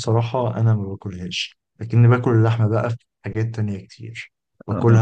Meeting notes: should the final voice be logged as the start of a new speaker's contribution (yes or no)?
no